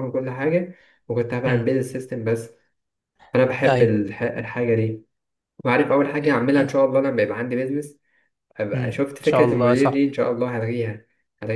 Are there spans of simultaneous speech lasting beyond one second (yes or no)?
yes